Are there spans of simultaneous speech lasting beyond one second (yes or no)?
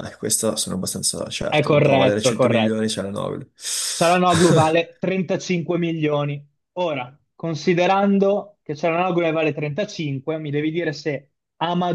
yes